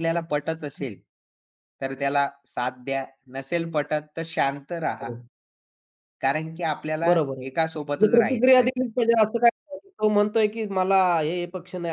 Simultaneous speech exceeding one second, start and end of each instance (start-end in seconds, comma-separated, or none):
7.0-8.7